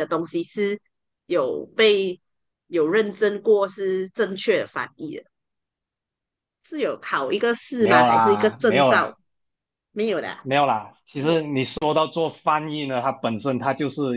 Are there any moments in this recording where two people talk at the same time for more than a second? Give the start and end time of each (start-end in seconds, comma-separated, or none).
7.8-9.2